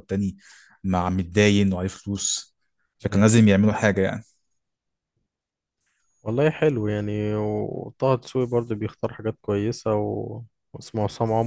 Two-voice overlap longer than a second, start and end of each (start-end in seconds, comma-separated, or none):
none